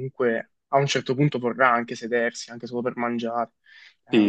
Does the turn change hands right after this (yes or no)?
yes